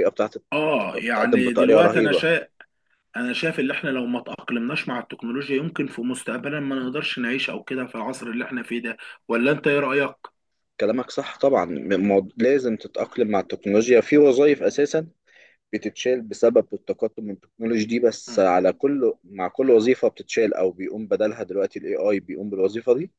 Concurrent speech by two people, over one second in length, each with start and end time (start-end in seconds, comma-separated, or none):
0.9-2.3